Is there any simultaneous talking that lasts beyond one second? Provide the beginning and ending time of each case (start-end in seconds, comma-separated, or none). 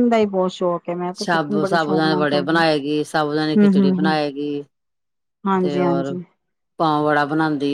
1.2-2.6